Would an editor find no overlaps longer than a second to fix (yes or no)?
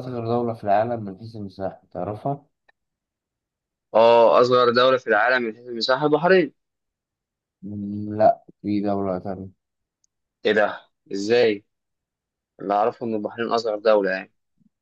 yes